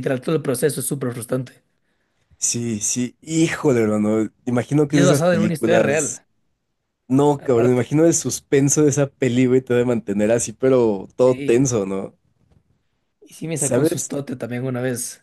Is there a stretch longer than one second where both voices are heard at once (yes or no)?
yes